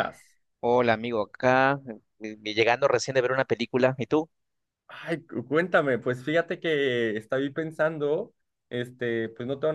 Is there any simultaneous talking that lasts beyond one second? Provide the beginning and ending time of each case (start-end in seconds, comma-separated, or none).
none